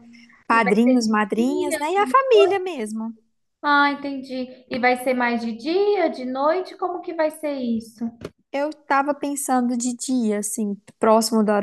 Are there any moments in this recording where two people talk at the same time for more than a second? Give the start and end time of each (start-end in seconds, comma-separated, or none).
0.5-2.6